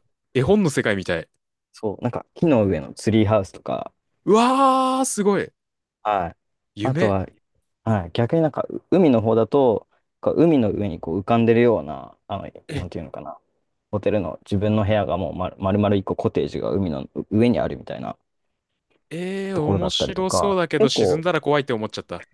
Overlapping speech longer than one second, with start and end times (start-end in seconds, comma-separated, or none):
19.5-21.2